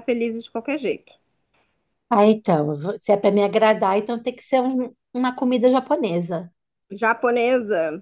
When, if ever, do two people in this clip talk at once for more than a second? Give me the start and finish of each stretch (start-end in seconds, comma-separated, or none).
none